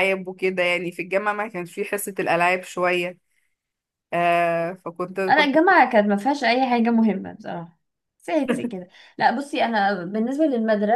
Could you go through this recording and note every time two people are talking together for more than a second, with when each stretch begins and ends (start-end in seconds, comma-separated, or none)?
none